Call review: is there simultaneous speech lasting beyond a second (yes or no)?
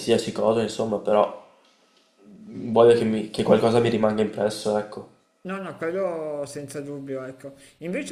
no